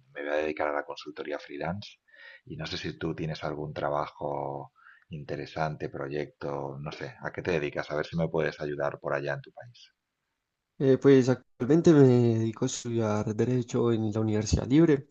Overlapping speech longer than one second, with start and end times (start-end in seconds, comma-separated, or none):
none